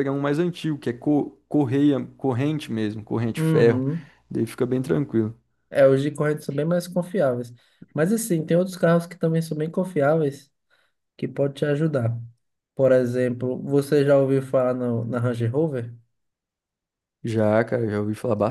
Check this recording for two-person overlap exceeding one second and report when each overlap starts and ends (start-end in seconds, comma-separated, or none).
none